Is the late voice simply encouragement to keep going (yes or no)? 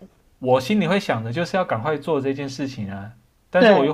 yes